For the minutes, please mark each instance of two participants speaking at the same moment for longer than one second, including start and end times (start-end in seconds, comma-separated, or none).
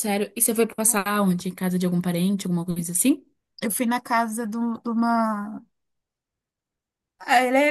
none